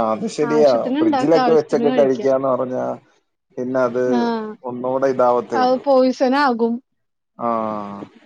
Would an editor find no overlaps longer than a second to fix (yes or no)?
no